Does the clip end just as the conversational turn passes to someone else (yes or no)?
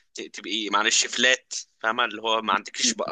no